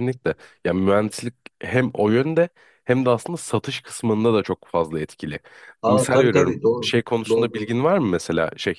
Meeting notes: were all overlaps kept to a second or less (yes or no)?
no